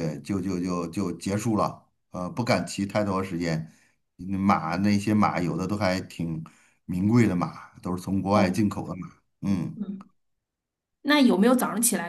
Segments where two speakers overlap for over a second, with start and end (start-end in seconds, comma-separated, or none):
none